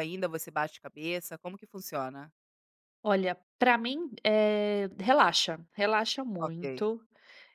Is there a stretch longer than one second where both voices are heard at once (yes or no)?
no